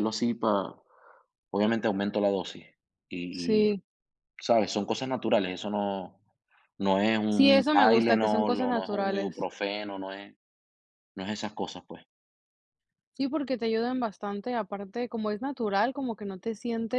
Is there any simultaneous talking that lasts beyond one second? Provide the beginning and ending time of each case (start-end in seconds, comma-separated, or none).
7.3-9.5